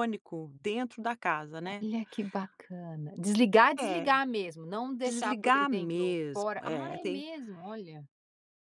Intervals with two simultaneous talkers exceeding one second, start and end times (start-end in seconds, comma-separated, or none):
5.0-7.2